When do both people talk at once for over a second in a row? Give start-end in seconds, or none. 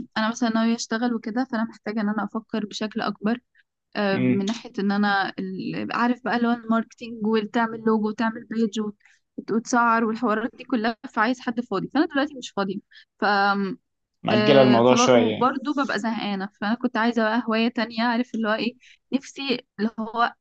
14.3-15.5